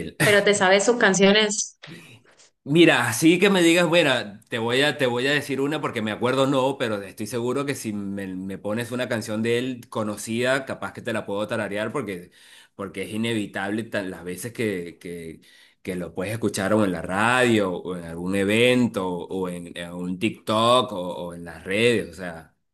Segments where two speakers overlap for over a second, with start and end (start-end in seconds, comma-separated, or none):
none